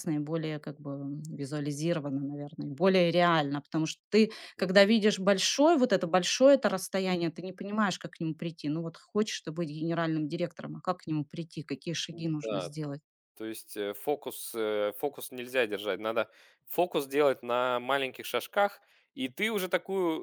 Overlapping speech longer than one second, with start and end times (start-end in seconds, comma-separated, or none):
none